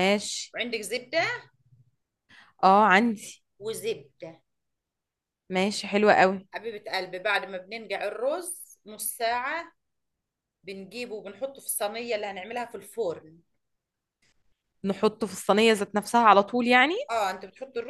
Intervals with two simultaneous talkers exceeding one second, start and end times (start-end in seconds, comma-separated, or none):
none